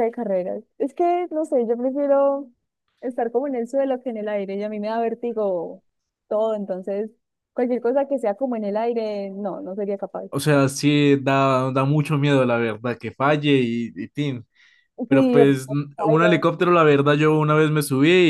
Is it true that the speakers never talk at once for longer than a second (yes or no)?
no